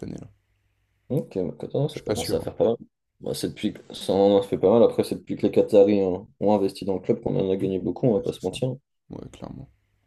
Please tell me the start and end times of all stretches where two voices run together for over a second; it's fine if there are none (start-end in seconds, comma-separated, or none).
none